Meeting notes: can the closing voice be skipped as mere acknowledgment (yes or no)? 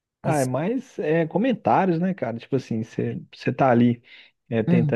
yes